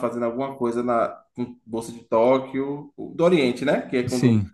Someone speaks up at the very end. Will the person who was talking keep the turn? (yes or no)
yes